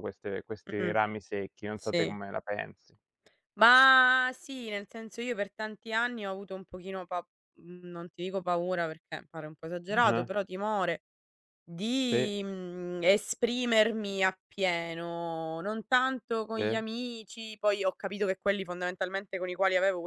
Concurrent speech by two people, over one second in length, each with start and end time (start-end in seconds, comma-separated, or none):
none